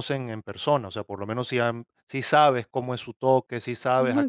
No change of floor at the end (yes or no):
yes